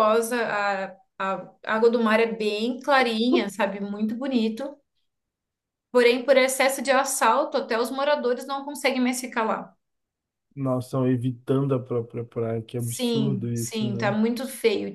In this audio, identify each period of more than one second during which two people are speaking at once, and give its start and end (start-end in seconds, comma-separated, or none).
12.8-14.2